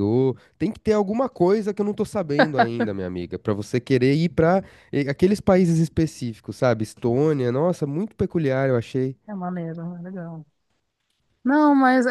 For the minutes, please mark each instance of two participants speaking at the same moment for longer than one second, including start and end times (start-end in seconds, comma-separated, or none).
none